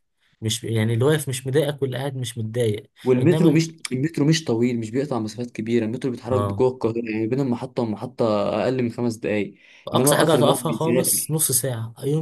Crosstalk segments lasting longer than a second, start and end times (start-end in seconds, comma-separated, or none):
9.9-11.4